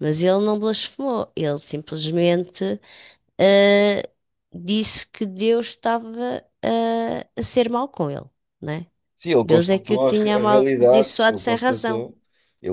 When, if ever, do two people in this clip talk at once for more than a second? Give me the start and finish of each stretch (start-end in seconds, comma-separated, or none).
9.4-12.0